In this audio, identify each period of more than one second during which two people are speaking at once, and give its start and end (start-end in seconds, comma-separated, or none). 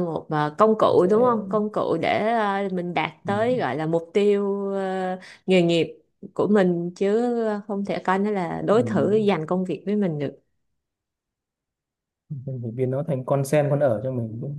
none